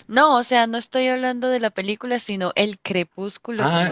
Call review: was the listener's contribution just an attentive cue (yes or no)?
no